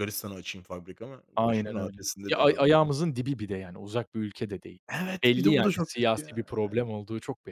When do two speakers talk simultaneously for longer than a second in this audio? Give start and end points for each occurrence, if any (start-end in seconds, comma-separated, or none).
1.4-2.9, 5.2-6.9